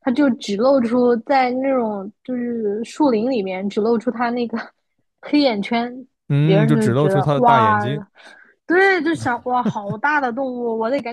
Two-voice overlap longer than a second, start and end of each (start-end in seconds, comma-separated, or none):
6.4-7.8